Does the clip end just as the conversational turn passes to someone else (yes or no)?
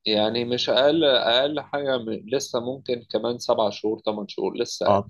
yes